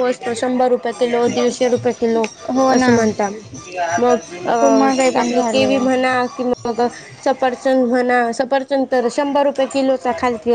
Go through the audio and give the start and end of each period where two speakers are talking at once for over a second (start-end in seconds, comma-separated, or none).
4.6-5.8